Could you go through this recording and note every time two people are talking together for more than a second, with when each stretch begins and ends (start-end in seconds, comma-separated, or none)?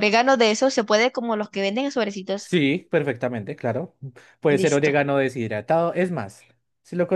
none